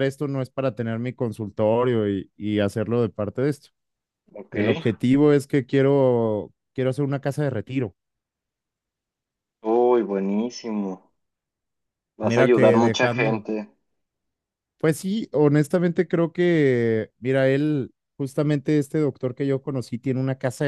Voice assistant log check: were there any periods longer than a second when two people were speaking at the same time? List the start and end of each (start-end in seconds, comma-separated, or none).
12.2-13.5